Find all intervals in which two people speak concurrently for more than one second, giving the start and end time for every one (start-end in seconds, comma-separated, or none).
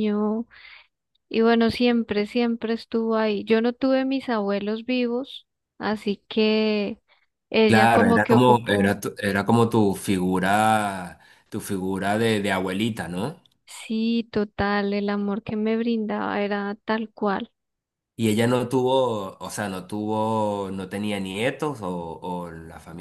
7.7-9.0